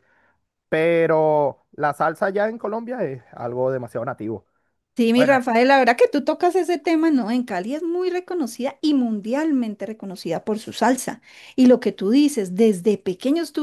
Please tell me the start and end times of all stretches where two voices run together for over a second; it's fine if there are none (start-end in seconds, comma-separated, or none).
none